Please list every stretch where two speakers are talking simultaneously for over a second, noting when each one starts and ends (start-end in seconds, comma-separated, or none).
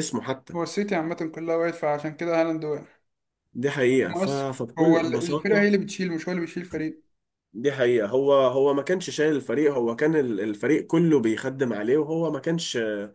4.1-5.7